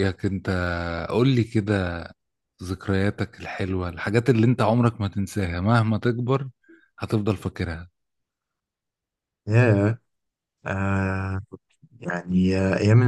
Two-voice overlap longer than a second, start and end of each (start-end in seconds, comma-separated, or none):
none